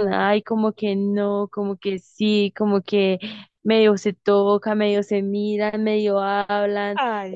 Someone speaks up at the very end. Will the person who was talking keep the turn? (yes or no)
no